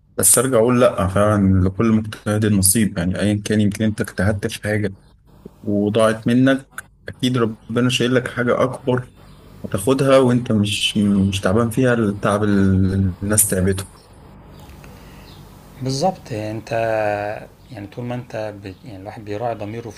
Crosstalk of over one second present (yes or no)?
no